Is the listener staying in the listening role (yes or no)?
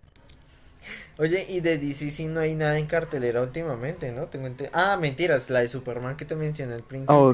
no